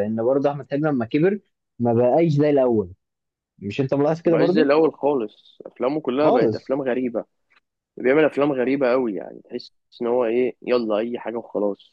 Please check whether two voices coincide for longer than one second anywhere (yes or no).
no